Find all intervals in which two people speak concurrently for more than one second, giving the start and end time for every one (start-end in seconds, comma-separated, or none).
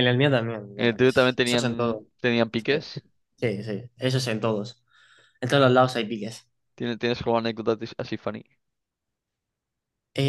0.8-2.1